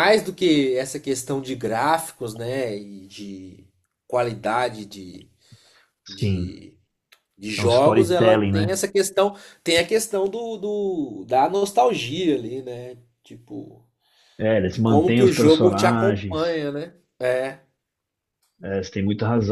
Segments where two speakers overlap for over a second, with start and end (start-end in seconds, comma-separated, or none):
7.6-8.8, 14.6-16.6